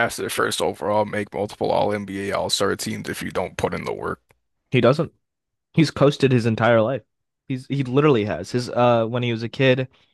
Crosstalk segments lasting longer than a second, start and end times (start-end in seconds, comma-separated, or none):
none